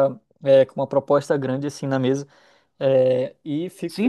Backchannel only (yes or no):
no